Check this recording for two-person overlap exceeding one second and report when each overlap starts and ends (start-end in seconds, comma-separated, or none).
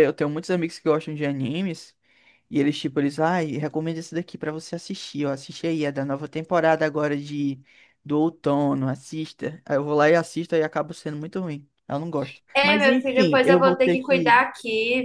12.5-14.3